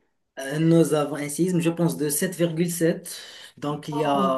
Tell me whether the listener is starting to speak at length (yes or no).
no